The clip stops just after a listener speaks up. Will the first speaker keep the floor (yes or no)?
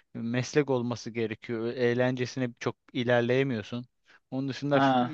yes